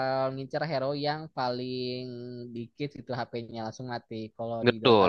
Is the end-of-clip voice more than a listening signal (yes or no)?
yes